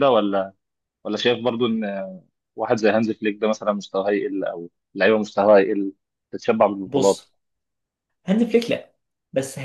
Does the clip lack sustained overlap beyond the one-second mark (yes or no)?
yes